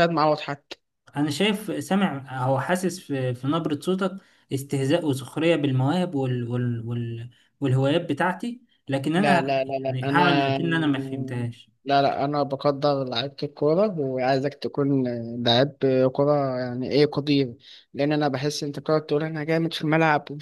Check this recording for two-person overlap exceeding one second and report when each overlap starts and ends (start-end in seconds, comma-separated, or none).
9.2-10.6